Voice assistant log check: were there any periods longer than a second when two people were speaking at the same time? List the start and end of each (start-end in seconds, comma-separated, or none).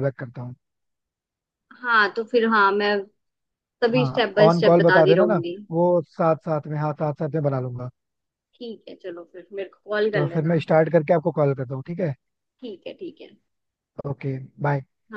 4.0-5.6